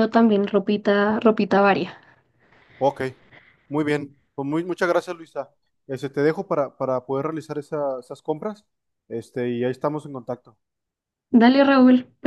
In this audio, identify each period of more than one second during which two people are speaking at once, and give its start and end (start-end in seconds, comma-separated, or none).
none